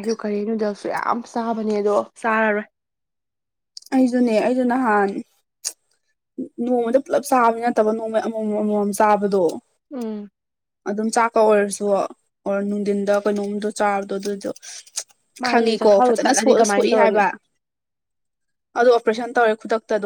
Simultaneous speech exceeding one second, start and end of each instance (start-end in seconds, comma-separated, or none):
15.5-17.2